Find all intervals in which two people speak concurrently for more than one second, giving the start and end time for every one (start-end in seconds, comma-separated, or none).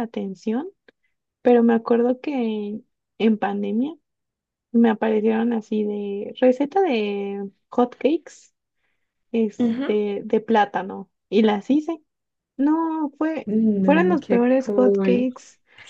13.4-15.3